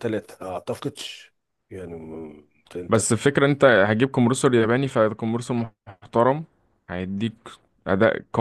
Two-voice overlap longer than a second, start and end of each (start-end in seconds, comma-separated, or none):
none